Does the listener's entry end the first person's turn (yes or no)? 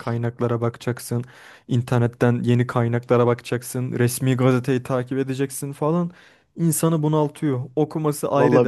no